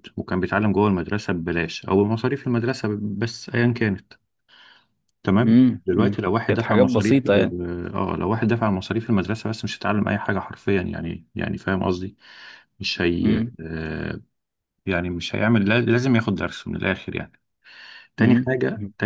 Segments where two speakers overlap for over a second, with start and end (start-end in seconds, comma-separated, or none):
5.5-7.6